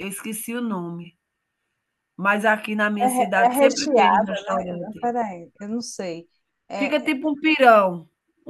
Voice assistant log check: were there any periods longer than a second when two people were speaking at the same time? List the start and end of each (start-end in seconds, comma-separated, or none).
3.0-5.0